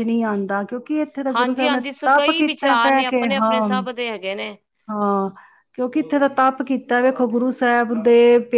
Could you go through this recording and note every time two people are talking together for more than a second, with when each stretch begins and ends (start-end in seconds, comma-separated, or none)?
1.3-3.6